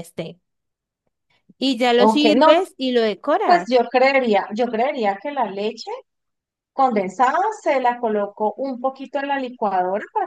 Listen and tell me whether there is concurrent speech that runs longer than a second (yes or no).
no